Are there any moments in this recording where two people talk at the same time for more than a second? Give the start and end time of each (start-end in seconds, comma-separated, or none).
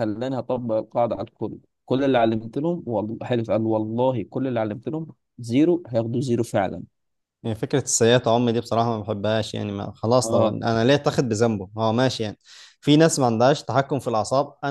none